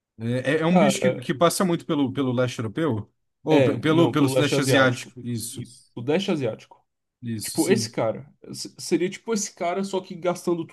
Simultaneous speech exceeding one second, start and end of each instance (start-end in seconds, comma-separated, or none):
3.5-5.7